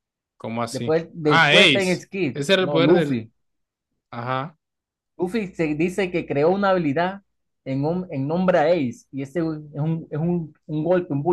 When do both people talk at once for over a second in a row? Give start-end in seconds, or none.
0.7-3.2